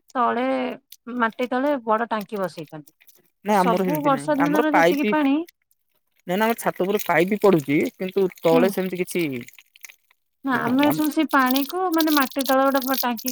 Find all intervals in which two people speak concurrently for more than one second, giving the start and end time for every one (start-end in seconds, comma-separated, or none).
3.5-5.3